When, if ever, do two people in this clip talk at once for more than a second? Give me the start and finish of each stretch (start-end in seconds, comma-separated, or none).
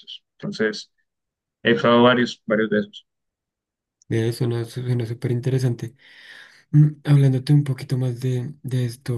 none